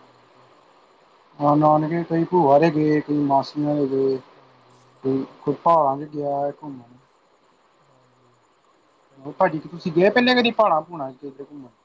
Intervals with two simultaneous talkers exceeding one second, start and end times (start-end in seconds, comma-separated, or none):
9.2-10.9